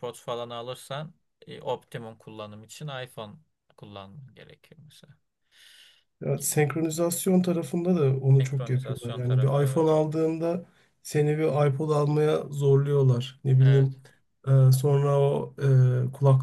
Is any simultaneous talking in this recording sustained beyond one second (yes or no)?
yes